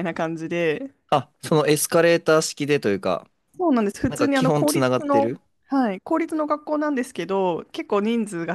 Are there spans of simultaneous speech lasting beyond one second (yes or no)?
yes